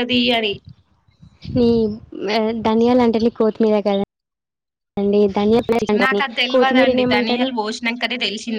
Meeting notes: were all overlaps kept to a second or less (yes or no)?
no